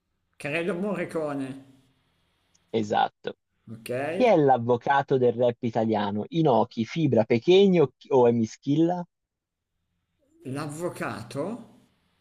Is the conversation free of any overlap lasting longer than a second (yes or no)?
yes